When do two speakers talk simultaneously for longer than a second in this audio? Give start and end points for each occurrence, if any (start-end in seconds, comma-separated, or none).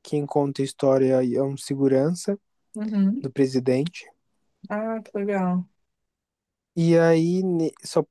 none